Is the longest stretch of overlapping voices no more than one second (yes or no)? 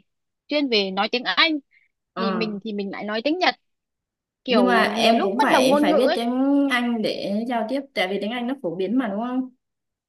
no